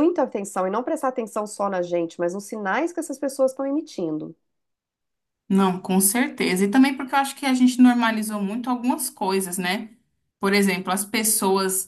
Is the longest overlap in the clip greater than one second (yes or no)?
no